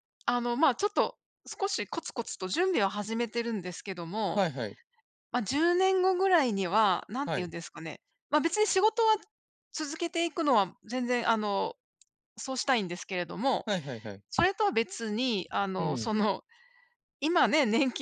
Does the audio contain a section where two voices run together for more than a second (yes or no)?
no